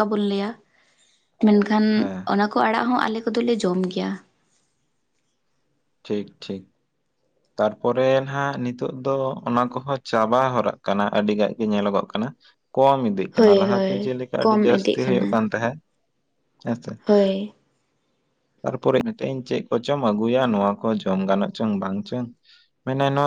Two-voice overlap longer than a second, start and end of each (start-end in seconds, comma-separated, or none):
13.4-15.3